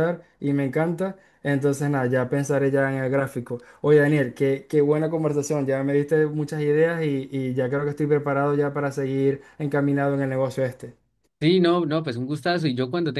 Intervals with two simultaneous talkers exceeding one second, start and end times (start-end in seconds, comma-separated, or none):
none